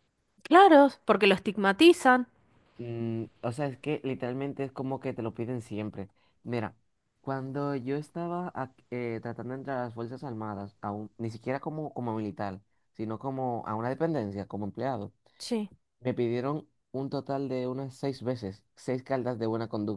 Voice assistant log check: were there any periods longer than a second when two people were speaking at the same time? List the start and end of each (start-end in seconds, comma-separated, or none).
none